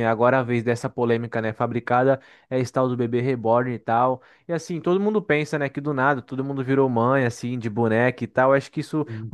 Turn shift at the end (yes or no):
no